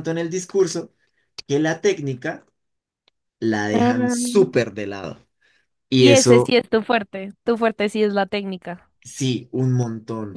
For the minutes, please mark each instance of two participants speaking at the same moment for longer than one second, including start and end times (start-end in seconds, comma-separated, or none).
none